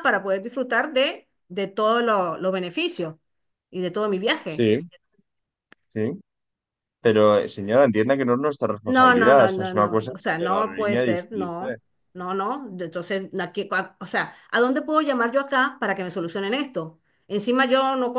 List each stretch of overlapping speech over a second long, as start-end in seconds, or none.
8.8-11.8